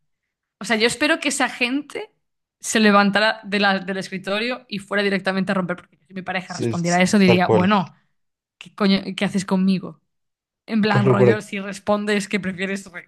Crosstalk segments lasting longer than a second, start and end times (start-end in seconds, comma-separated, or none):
6.5-7.7